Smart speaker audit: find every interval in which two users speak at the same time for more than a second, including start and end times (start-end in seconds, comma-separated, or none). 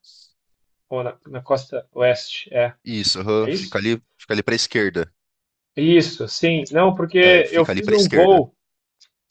7.2-8.5